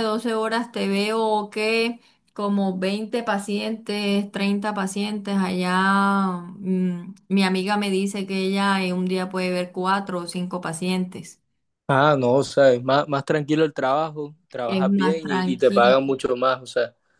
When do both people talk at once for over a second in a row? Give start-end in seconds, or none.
14.7-15.9